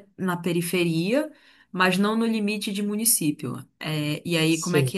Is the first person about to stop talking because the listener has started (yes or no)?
no